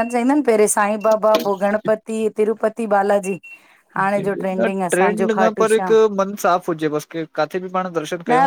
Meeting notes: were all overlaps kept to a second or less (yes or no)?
no